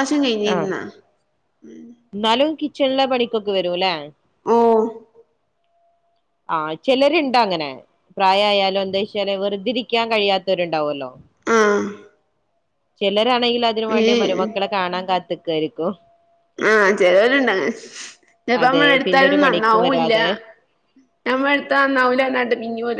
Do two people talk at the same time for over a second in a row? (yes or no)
yes